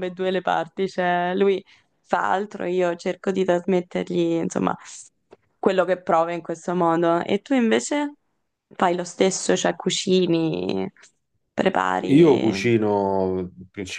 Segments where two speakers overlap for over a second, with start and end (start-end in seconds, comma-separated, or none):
none